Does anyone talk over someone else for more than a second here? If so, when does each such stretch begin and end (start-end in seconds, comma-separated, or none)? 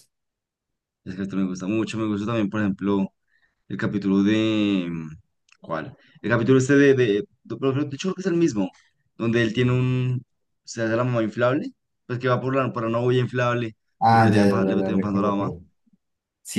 14.0-15.5